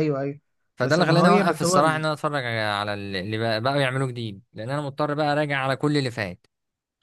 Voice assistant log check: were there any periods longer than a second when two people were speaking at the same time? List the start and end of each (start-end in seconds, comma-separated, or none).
0.8-2.0